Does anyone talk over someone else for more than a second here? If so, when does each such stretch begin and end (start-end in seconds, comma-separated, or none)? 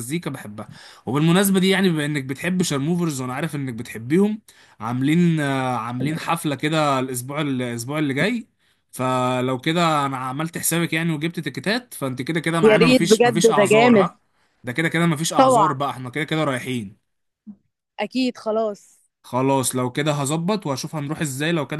12.6-14.1